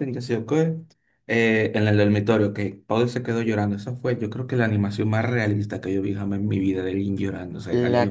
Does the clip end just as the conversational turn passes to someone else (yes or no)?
yes